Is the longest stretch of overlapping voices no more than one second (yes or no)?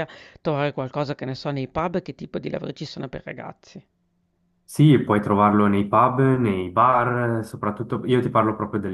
yes